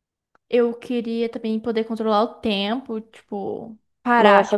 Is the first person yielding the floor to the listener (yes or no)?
yes